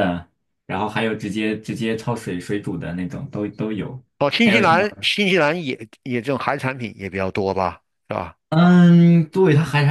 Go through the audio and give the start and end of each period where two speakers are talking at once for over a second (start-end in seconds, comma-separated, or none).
none